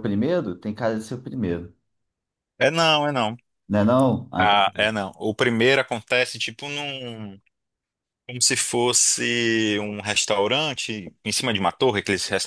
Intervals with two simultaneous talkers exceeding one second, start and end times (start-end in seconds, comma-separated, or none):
none